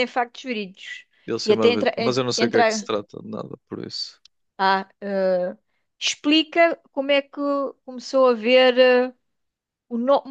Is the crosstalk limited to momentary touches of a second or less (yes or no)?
no